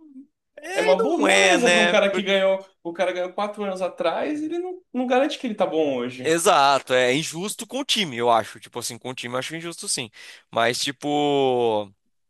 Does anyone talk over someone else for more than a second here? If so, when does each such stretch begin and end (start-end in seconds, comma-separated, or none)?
0.8-2.2